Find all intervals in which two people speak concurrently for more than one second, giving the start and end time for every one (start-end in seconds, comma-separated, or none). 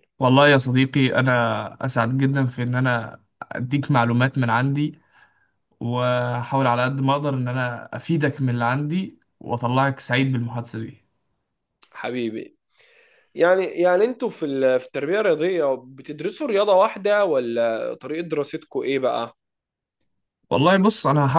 none